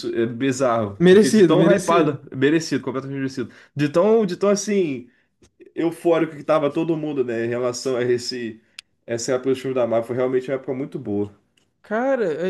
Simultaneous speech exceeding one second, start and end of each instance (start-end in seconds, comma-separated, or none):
1.0-2.2